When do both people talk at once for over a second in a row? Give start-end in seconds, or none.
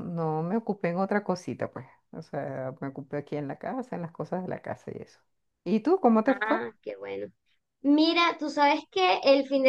none